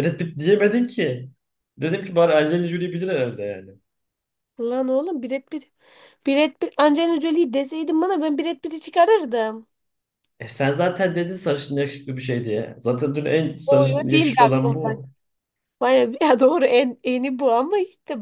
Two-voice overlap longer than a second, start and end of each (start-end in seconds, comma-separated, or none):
13.7-14.9